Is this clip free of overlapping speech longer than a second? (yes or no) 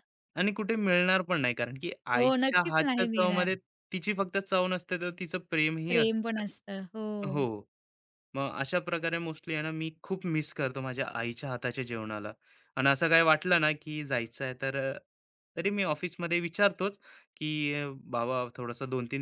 no